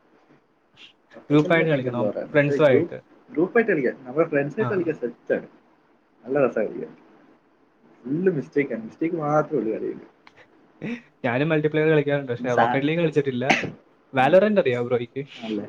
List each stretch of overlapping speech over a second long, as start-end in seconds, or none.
1.3-2.9